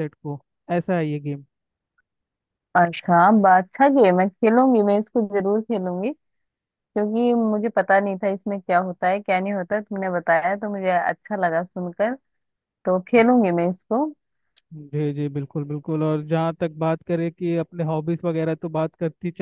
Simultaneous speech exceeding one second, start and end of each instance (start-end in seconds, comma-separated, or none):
none